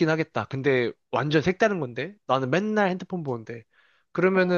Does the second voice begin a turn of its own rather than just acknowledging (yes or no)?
no